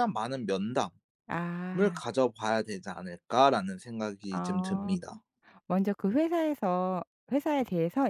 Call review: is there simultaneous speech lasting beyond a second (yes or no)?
no